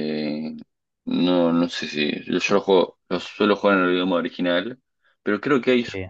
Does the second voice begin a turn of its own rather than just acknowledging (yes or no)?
no